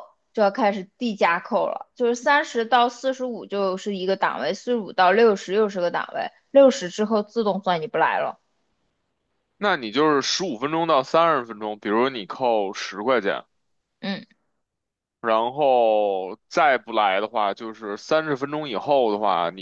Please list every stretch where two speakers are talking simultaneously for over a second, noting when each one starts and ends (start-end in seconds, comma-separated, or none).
none